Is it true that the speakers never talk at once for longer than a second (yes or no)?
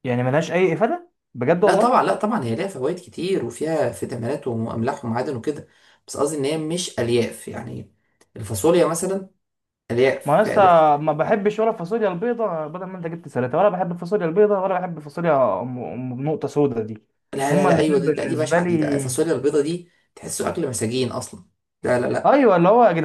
no